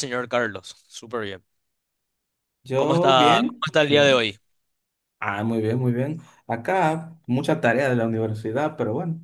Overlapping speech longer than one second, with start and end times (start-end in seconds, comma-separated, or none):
2.7-4.3